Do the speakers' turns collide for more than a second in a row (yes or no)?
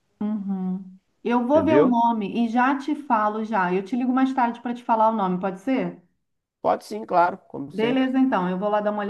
no